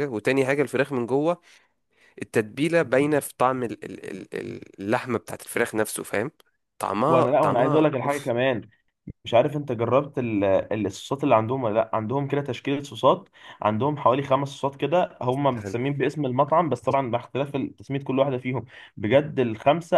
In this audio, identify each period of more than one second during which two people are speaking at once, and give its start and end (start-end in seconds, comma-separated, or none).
7.1-8.3